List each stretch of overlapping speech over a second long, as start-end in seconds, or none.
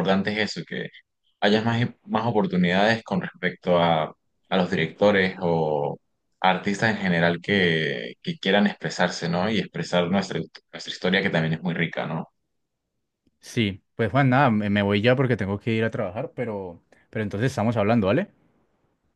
none